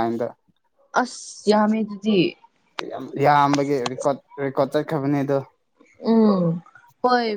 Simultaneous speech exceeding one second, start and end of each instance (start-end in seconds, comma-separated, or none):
none